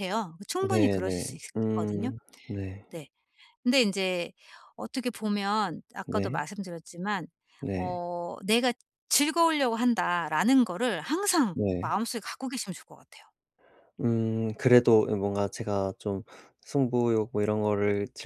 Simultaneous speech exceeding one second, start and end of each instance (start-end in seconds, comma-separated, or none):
0.7-2.1